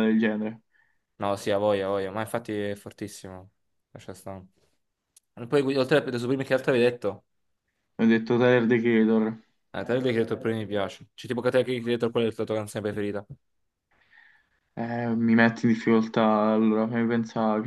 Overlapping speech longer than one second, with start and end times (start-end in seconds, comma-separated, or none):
none